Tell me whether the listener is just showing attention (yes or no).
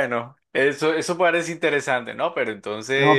no